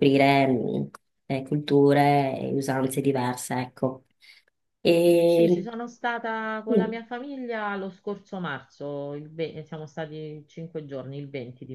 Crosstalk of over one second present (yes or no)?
no